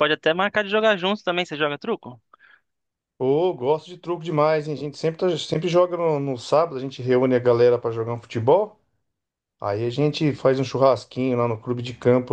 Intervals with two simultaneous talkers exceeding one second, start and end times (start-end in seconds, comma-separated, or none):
none